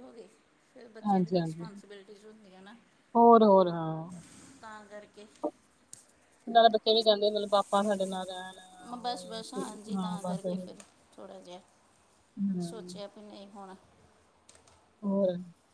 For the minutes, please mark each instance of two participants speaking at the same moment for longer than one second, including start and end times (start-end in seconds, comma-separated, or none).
none